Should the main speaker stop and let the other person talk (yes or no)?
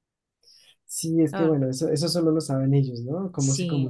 yes